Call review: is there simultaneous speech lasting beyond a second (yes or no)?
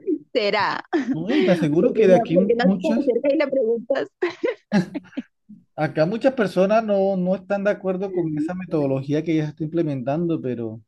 yes